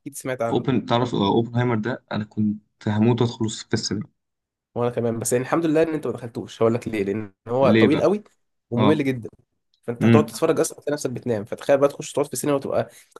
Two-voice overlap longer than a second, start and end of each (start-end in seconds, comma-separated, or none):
none